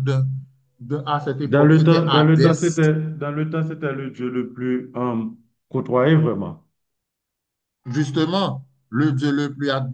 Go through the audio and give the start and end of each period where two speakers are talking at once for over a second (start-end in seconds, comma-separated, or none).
1.5-2.8